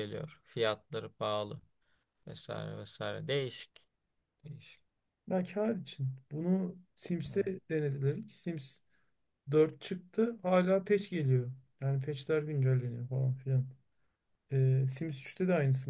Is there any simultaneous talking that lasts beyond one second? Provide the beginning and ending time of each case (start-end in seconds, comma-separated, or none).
none